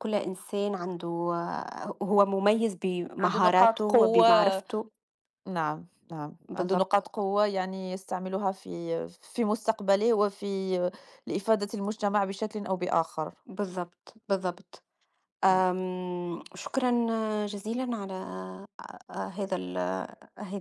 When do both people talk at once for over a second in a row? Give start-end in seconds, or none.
3.2-4.6